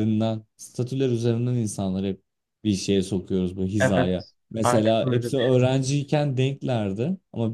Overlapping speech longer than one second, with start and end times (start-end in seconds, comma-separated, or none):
3.8-5.6